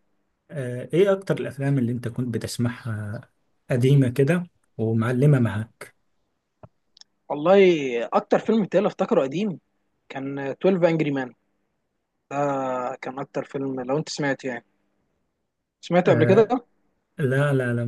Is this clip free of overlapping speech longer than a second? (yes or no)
yes